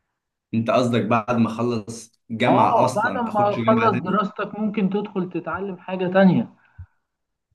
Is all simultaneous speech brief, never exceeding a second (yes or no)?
no